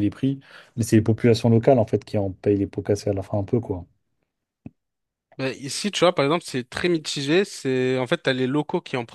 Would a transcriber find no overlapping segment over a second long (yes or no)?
yes